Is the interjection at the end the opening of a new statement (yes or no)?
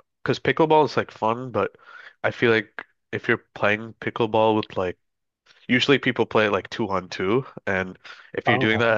no